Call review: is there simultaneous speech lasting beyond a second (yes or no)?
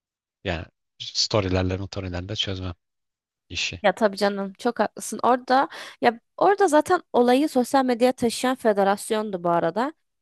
no